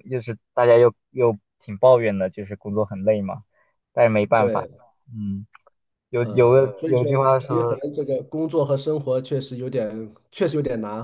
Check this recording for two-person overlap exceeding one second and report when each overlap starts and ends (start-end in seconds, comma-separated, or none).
6.2-7.8